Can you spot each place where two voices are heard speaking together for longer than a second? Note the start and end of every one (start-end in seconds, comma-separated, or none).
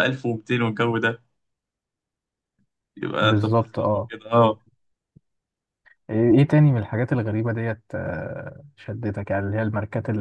3.2-4.5